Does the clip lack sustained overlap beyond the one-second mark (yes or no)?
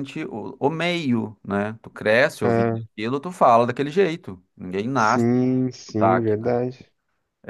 no